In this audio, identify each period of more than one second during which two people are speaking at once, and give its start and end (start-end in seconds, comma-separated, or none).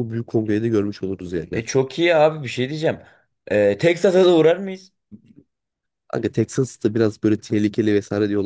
none